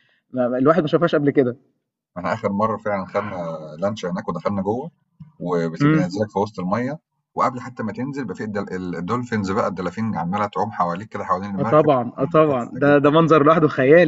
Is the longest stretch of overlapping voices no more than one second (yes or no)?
no